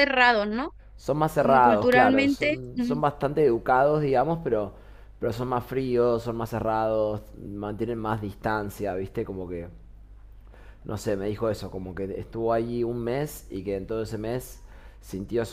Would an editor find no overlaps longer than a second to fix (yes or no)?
no